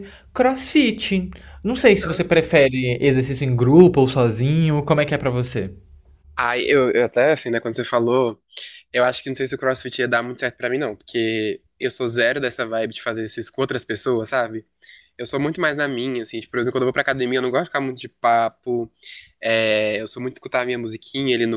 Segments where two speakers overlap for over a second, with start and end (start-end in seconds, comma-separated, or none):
none